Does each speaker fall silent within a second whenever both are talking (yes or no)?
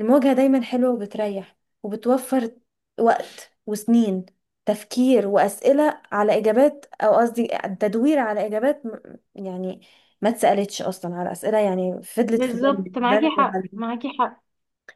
no